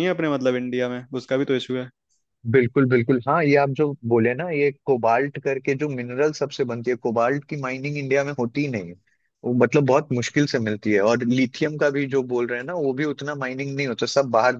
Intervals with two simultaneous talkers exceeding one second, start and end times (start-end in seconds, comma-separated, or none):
none